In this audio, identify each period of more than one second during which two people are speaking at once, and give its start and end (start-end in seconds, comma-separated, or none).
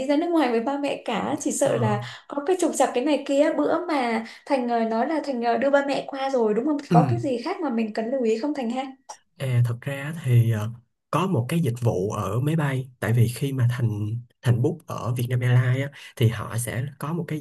none